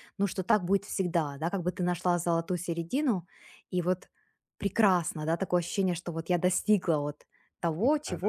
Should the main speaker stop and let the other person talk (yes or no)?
no